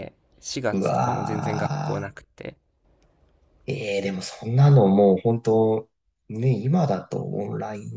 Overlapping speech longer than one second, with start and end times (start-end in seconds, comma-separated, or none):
0.7-2.1